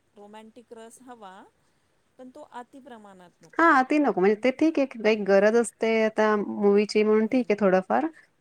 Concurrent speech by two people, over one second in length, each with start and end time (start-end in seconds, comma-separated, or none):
none